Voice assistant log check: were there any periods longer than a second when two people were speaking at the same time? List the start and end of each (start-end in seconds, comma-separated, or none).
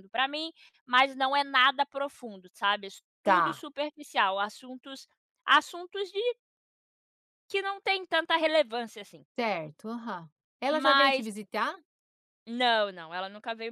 none